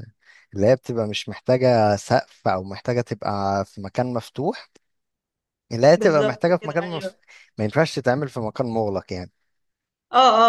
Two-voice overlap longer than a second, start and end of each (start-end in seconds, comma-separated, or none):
6.0-7.2